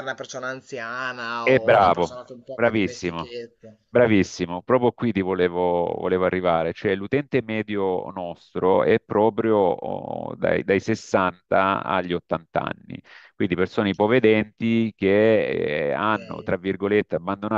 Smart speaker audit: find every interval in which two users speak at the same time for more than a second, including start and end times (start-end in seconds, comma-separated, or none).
1.4-3.3